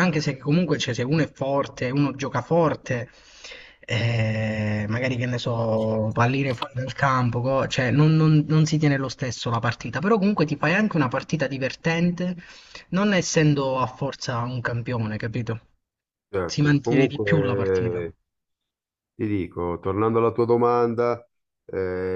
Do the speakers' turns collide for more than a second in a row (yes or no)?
yes